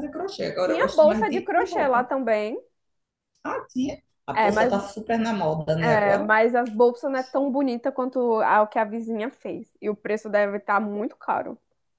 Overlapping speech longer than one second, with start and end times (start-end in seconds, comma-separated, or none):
0.6-2.1